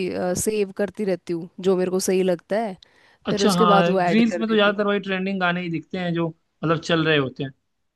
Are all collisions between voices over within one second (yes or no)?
no